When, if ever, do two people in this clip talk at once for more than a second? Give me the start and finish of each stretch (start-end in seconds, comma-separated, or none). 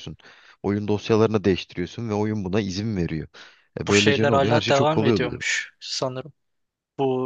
3.9-5.4